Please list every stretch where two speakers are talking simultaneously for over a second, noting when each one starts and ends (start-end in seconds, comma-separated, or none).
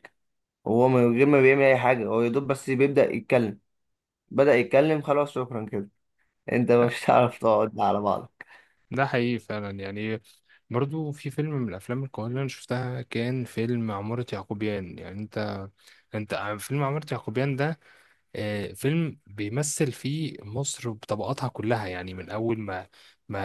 none